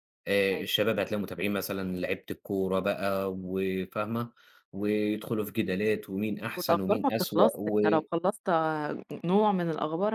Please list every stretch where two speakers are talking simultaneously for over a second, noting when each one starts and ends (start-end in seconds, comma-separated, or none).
6.5-7.8